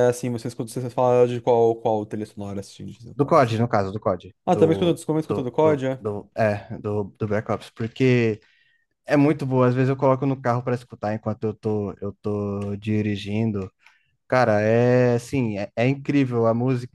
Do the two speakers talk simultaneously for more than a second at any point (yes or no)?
yes